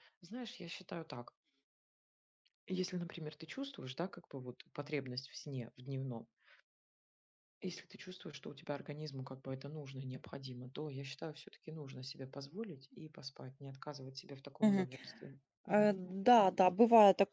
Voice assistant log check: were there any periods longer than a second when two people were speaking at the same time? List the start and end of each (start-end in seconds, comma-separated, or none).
none